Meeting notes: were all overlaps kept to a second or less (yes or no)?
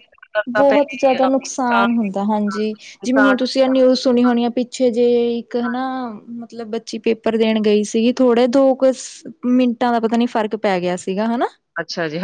no